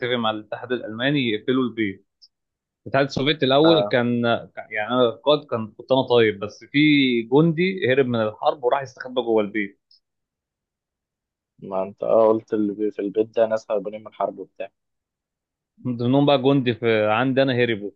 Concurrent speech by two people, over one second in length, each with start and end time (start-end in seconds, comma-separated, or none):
none